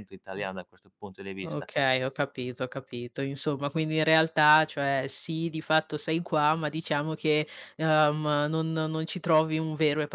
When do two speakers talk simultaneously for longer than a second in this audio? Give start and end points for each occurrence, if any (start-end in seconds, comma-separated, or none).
none